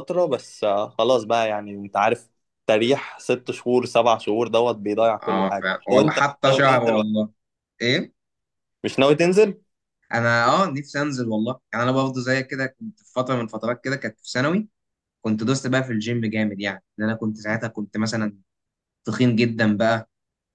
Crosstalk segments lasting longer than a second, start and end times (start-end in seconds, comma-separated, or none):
5.2-7.2